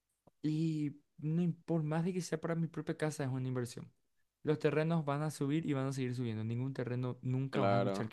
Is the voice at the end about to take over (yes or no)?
yes